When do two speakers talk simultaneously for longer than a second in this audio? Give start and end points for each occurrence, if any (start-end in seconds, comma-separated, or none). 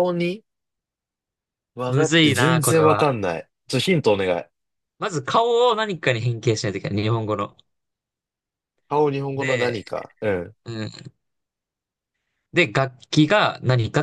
1.9-3.1